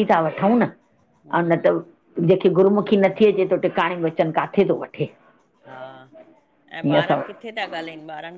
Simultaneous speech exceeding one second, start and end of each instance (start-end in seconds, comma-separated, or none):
none